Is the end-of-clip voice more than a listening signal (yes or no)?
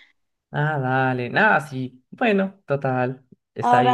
yes